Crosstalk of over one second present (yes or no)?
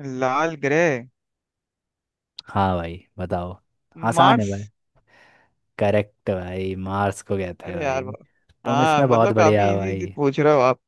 yes